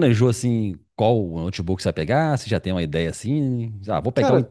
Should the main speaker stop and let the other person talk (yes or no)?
no